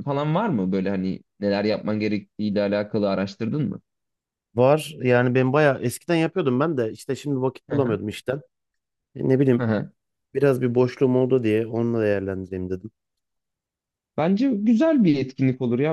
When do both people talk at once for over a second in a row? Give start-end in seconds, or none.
none